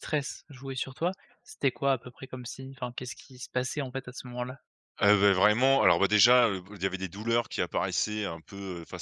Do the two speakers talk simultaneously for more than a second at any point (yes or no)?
no